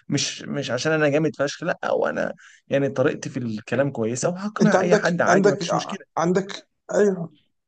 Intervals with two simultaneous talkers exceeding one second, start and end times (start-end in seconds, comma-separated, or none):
4.6-6.0